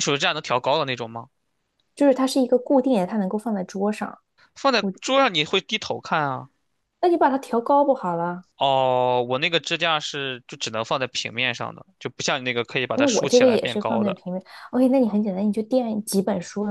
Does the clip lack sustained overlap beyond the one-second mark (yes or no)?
no